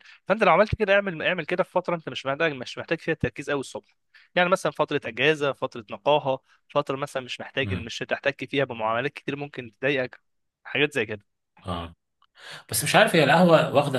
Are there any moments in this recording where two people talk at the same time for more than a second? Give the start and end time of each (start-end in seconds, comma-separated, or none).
none